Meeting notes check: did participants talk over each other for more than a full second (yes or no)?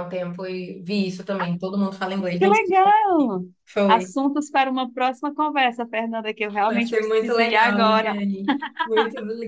yes